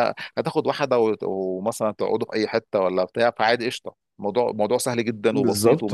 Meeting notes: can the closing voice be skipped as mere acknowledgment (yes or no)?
no